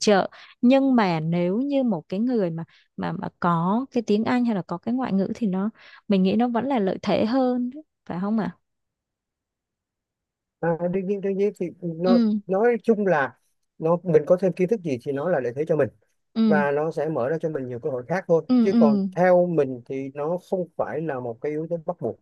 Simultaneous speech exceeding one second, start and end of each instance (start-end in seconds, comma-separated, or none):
none